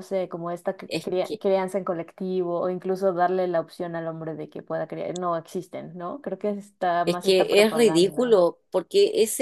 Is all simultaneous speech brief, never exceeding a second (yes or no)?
no